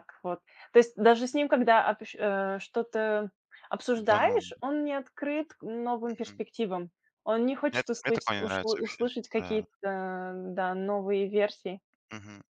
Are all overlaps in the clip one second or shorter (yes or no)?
no